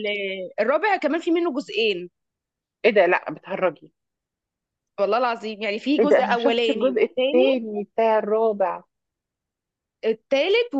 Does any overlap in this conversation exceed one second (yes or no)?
yes